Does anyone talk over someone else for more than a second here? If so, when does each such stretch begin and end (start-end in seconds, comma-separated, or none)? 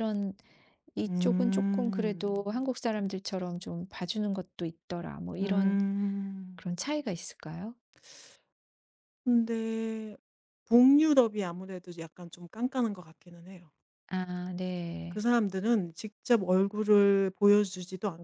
1.1-2.5